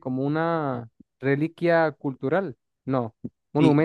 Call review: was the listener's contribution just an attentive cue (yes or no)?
yes